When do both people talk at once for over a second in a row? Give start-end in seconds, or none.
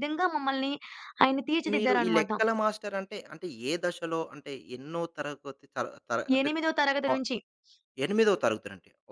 none